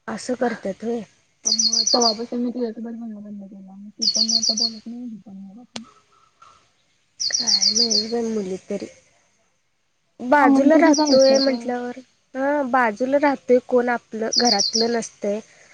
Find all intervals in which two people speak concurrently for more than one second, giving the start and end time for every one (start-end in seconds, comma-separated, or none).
10.4-11.7